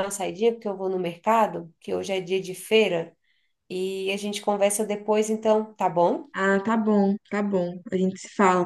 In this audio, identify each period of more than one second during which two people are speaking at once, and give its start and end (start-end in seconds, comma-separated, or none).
none